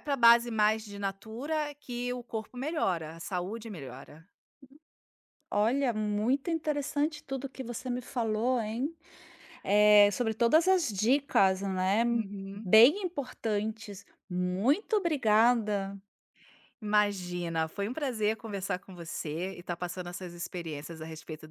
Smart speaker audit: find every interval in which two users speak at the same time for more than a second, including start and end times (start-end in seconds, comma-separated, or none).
none